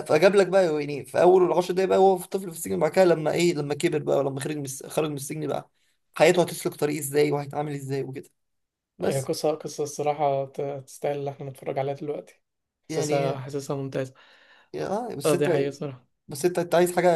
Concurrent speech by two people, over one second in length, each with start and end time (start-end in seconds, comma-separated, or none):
none